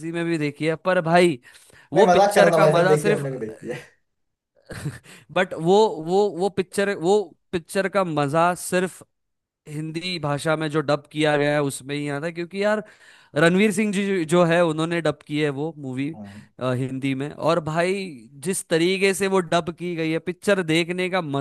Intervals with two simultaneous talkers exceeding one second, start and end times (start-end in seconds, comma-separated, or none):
1.9-3.2